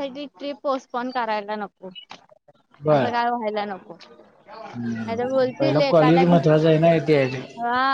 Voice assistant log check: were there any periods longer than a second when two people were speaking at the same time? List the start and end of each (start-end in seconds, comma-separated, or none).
5.1-6.4